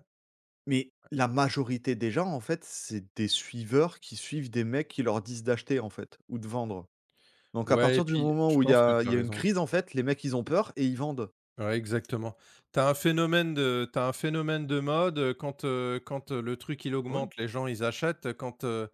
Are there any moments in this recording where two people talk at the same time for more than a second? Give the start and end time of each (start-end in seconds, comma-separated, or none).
7.7-9.4